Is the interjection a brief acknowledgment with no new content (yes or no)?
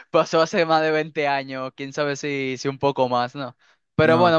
yes